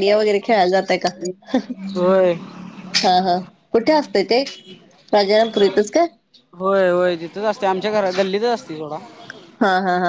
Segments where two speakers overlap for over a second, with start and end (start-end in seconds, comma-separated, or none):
none